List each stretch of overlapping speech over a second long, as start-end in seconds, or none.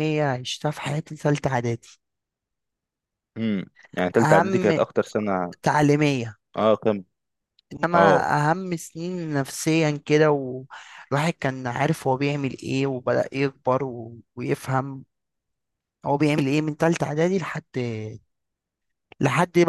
none